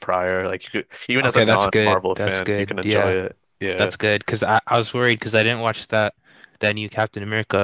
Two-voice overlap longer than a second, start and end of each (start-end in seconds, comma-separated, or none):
1.2-3.2